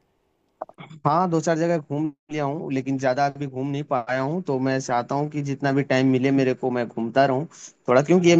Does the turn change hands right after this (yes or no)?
no